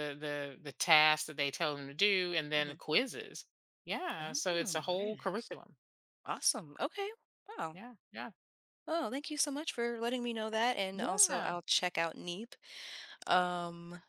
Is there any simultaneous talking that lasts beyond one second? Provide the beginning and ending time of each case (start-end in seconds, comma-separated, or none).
4.2-5.5